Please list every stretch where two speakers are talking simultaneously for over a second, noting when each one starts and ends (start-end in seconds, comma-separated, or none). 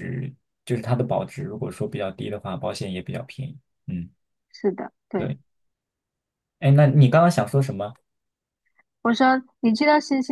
none